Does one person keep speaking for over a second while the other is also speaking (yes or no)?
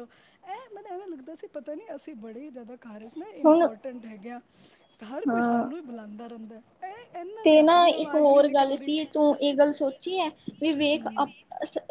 yes